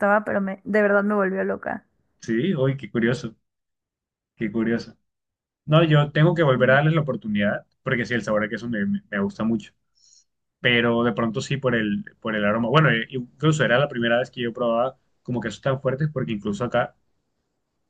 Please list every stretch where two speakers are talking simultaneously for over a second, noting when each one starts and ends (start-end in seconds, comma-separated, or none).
none